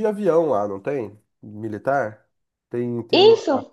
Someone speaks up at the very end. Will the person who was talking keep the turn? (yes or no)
no